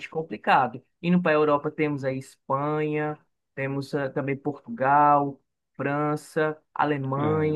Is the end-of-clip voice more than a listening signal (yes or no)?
no